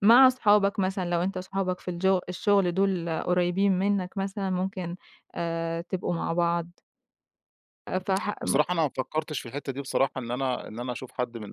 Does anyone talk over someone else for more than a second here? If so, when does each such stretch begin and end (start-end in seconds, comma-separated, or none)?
none